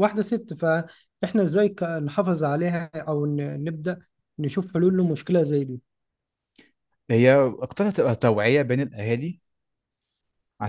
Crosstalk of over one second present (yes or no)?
no